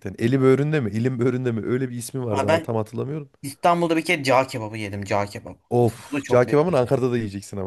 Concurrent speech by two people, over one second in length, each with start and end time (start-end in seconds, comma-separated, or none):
5.7-7.0